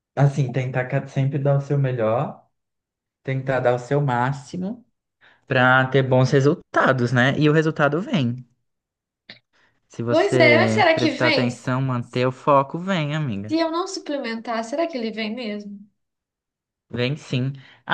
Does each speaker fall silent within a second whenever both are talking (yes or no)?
no